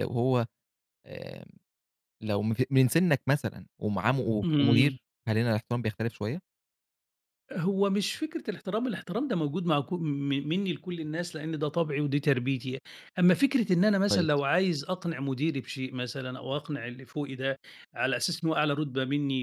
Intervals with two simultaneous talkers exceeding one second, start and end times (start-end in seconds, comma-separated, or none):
none